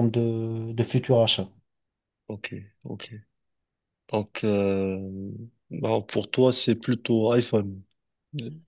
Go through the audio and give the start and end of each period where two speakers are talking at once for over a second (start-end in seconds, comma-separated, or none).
none